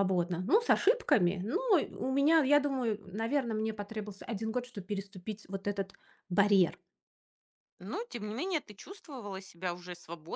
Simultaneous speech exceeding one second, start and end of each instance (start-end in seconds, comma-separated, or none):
none